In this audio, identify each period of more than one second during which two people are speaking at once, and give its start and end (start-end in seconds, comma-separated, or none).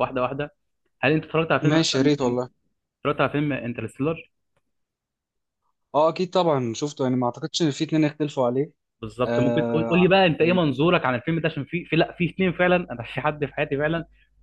9.2-10.6